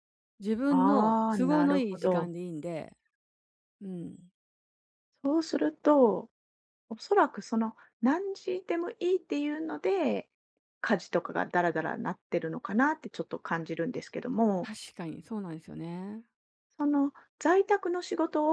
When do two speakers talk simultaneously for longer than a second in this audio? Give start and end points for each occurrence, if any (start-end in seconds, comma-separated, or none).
0.7-2.3